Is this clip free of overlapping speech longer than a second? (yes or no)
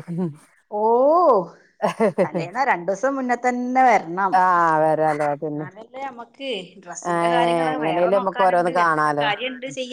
no